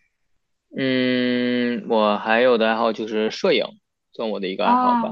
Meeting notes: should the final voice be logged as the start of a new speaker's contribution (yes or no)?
no